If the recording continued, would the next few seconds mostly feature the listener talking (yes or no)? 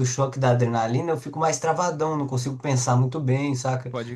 no